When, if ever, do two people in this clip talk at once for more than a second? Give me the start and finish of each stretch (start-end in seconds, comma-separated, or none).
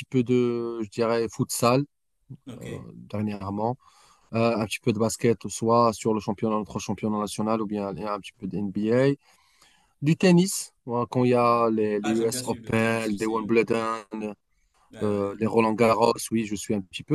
12.0-13.6